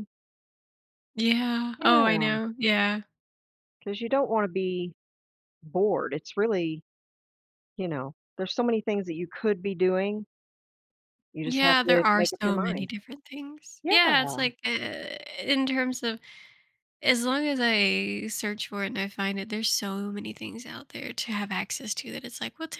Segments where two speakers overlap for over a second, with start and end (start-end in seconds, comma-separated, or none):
11.5-12.9